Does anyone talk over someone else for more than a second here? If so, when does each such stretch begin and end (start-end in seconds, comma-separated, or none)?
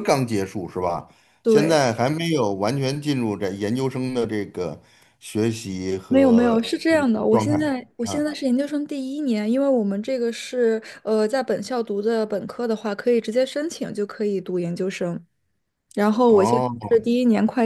6.1-8.3